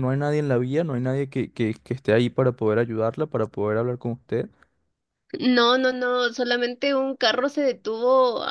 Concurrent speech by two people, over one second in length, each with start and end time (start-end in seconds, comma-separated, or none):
none